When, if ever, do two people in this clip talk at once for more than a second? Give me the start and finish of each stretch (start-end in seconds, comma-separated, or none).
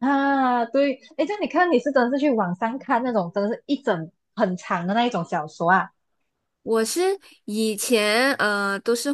none